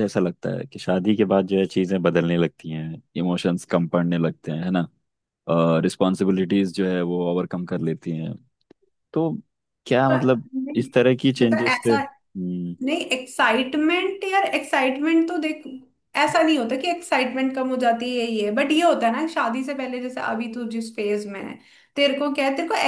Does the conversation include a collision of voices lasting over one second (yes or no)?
no